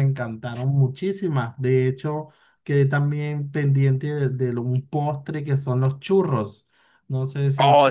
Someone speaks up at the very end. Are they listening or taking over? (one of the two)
taking over